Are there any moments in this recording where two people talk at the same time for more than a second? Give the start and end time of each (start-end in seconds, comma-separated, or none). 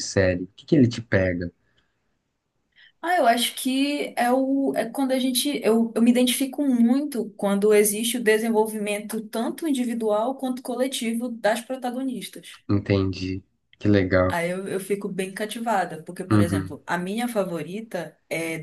none